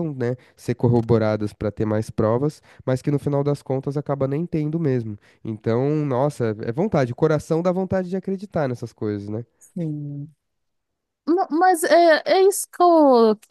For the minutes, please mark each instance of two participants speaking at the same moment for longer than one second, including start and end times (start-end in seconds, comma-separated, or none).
none